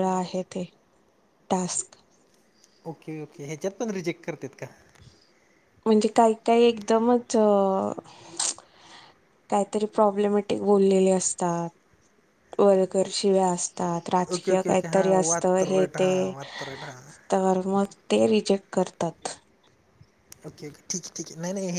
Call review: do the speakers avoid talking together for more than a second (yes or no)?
no